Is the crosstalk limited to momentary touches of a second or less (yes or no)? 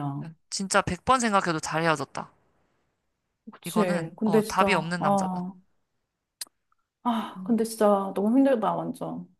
no